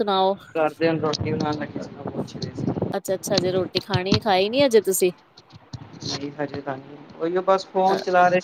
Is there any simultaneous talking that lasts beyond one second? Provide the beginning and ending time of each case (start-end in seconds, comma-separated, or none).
none